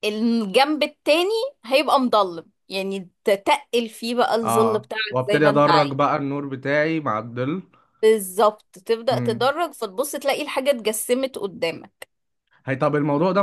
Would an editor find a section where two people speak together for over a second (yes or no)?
yes